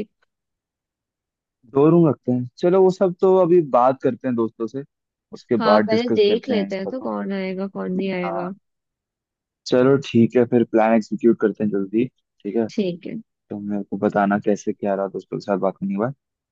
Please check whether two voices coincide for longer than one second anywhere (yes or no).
yes